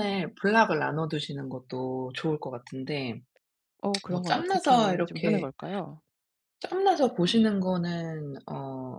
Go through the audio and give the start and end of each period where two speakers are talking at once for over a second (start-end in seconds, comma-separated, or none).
4.1-5.5